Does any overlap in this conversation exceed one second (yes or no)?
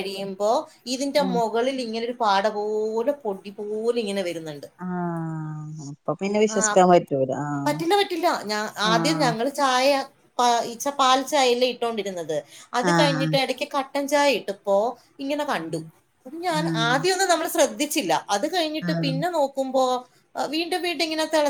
no